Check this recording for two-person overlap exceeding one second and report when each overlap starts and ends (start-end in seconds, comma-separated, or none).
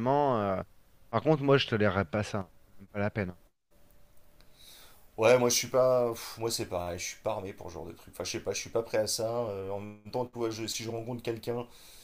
none